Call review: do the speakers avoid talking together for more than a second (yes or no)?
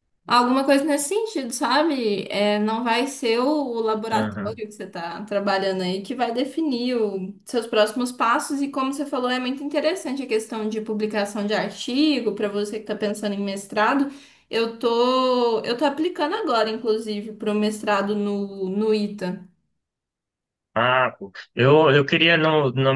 yes